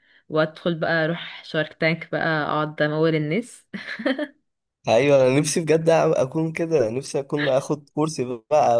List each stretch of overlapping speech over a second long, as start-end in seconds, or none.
none